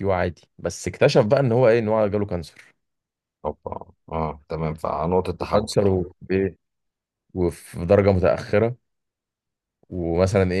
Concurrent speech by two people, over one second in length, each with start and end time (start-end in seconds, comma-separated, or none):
none